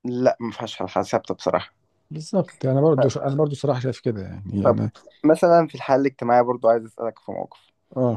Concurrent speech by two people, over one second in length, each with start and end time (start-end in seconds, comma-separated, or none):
none